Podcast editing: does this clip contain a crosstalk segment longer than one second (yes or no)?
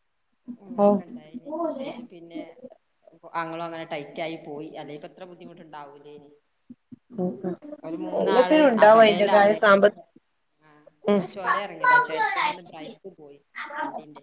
no